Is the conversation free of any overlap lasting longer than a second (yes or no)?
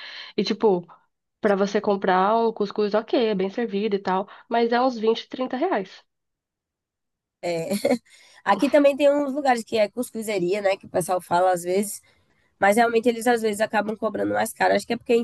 yes